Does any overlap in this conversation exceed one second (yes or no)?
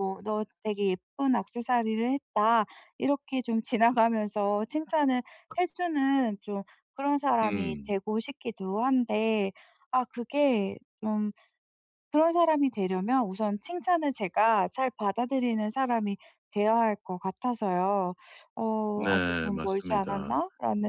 yes